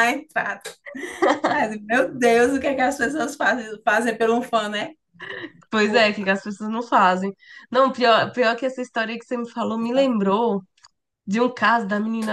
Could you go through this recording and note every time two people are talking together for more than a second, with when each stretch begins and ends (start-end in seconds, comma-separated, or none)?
none